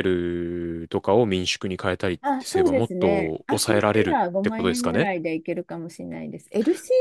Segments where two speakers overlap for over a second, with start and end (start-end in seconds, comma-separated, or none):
2.2-5.1